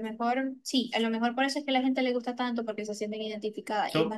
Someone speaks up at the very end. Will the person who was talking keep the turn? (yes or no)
no